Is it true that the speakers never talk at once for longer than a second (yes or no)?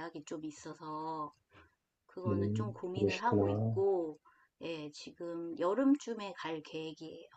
no